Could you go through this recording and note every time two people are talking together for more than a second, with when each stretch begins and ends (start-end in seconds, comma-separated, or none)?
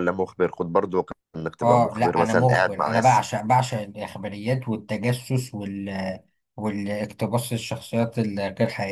1.6-3.2